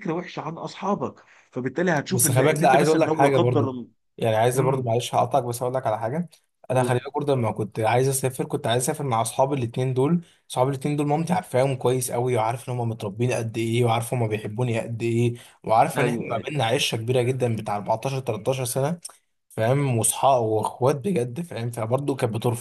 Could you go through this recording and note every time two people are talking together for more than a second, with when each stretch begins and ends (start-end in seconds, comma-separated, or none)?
2.1-3.8